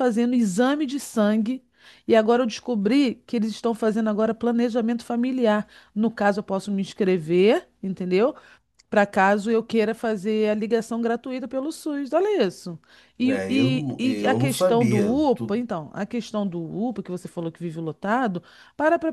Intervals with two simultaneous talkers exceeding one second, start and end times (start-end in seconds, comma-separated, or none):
13.2-15.6